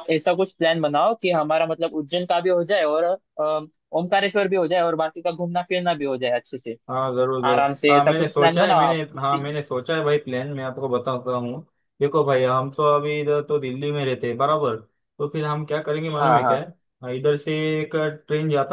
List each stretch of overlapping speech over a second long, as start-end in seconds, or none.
7.5-9.5